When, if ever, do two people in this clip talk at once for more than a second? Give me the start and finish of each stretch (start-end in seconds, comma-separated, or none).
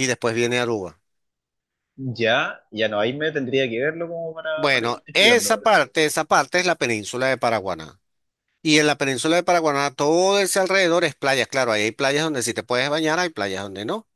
4.5-5.8